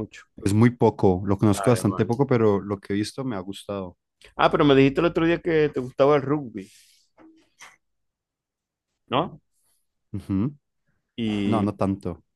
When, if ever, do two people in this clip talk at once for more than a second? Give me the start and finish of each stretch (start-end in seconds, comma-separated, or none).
none